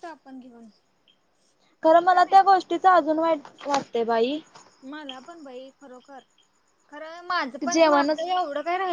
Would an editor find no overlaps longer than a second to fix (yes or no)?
yes